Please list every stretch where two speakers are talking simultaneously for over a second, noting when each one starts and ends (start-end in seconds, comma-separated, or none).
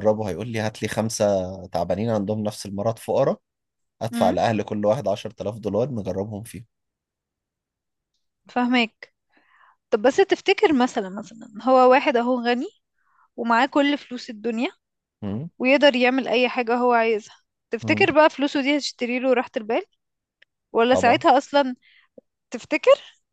none